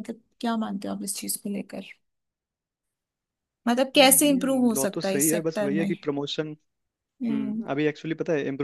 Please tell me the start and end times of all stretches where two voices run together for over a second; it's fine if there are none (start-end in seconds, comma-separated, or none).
4.0-5.9